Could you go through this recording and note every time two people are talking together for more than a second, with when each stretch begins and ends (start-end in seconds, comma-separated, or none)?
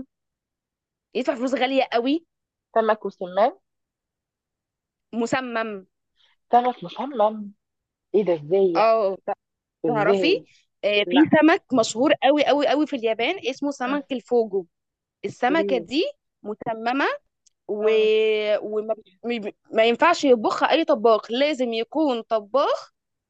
none